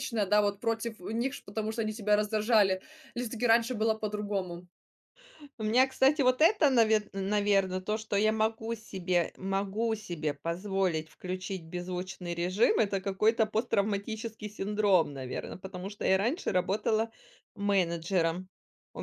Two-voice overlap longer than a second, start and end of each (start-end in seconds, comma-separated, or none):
none